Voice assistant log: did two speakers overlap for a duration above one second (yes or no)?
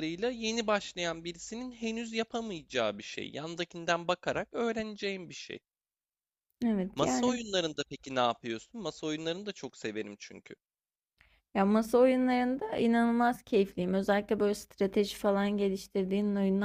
no